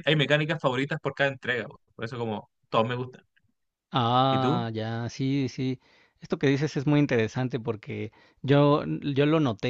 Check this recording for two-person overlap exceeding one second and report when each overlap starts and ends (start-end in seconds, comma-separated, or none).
none